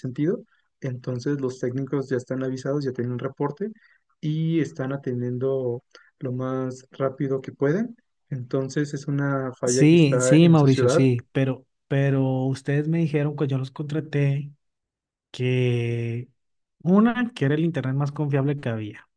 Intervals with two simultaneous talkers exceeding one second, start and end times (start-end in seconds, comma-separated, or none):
9.6-11.1